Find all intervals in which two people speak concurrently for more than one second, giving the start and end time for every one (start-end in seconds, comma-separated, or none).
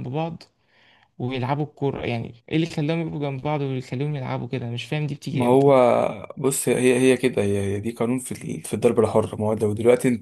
none